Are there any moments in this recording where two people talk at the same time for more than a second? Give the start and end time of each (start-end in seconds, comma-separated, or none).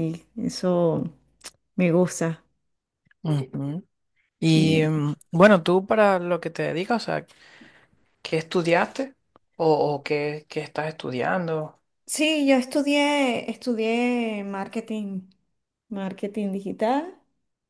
none